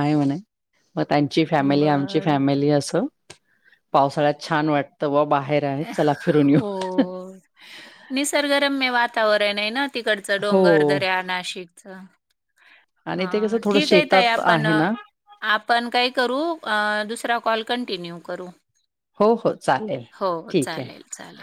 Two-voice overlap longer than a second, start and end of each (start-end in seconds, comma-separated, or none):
13.2-14.7